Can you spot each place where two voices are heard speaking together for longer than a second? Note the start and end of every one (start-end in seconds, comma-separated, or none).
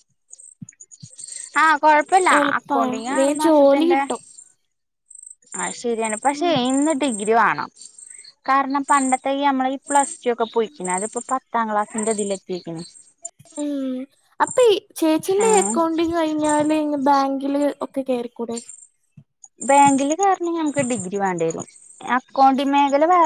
2.4-4.0